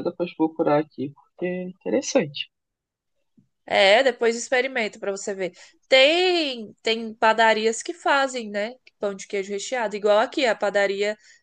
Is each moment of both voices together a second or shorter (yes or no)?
yes